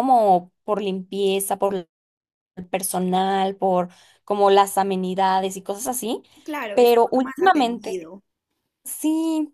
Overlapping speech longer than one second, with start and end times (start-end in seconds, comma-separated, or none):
6.7-8.0